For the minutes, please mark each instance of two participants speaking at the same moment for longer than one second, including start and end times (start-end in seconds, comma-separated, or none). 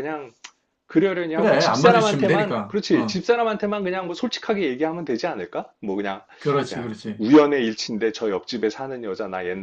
1.3-3.2